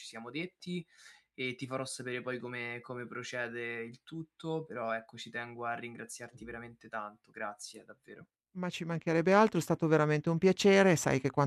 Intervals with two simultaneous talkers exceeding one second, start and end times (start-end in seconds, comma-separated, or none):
none